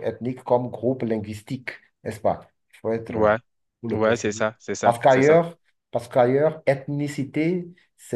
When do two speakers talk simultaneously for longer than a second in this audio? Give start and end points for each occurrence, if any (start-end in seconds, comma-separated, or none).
3.9-5.4